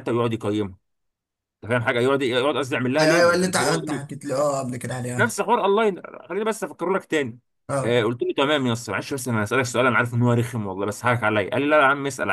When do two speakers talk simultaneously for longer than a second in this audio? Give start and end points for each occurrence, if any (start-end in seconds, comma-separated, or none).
3.0-4.2